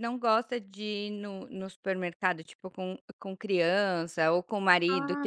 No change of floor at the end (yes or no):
yes